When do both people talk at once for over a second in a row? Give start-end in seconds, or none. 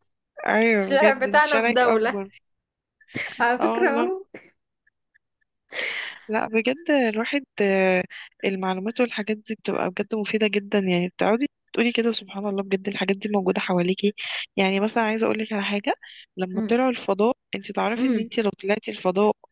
0.8-2.2